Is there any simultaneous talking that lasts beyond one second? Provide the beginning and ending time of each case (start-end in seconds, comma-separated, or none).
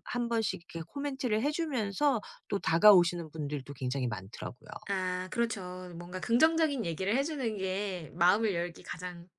none